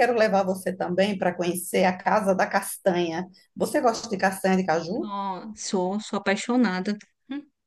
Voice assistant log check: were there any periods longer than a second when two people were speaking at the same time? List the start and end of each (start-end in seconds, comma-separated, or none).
none